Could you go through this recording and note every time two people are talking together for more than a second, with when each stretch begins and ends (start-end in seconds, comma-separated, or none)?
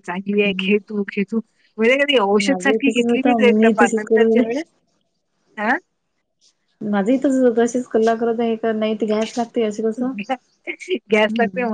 2.4-4.4